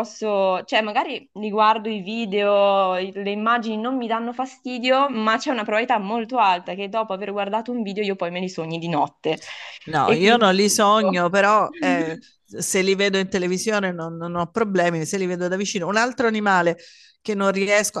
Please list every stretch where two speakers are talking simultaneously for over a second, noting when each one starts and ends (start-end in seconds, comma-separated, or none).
10.0-11.2